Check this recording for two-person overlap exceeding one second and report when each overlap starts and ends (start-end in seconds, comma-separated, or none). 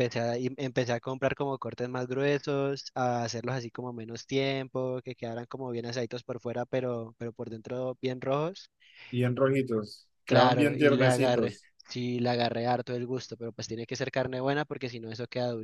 10.2-11.7